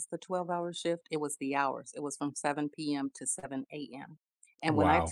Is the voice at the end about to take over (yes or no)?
no